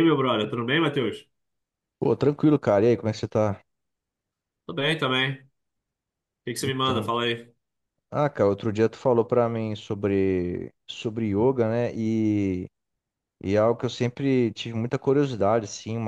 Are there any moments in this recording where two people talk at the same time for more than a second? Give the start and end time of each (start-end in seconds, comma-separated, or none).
none